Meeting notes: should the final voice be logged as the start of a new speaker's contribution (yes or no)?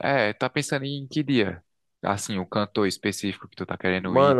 yes